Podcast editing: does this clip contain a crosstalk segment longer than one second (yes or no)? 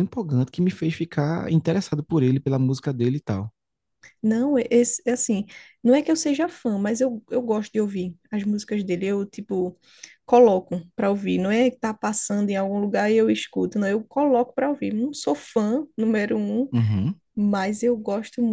no